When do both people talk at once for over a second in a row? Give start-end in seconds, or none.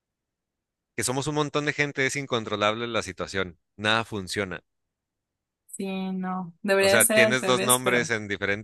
6.8-8.1